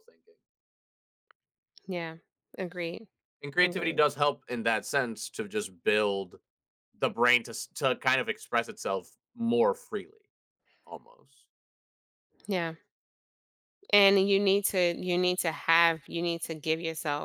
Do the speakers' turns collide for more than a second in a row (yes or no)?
no